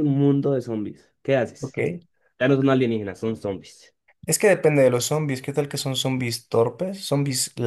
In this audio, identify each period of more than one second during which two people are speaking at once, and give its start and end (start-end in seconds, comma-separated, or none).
none